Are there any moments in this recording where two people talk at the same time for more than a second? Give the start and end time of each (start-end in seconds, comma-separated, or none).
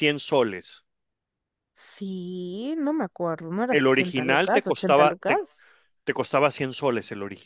3.7-5.4